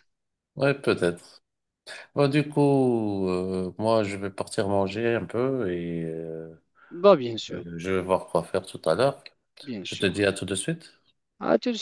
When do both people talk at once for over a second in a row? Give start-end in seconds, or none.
none